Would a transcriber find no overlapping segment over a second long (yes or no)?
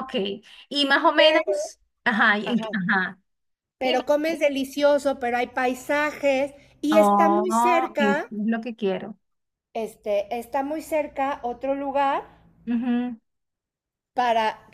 no